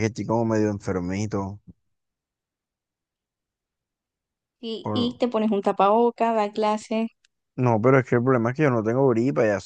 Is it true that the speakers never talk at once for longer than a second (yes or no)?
yes